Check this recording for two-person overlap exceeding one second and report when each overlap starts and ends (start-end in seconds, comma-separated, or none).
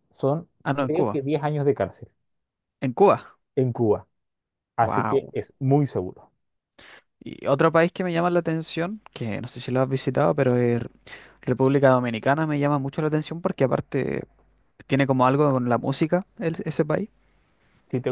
none